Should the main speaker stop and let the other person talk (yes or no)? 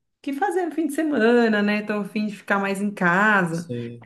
no